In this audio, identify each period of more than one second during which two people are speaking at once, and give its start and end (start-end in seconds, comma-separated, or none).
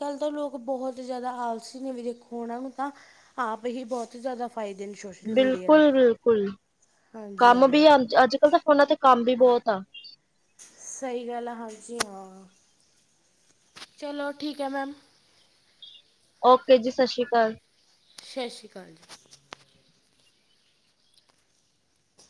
none